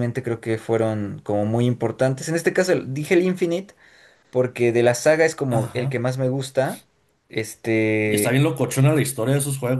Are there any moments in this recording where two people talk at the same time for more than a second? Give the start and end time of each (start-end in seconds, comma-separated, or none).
none